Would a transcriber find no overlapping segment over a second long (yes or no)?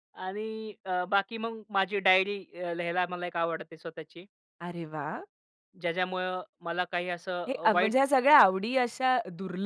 yes